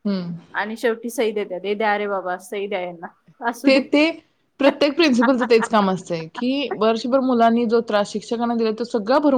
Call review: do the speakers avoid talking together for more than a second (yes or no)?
yes